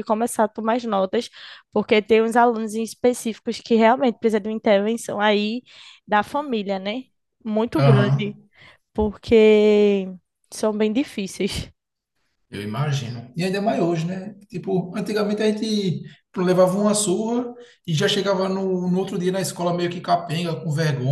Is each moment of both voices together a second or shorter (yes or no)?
yes